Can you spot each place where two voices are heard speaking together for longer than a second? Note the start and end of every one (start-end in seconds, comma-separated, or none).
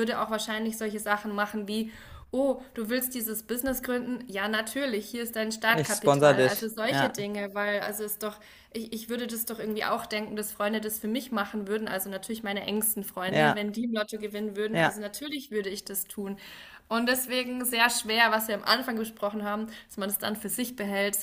5.7-7.3